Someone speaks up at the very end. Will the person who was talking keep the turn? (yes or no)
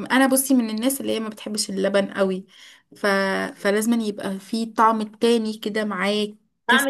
no